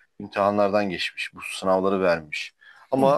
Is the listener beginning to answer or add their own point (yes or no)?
no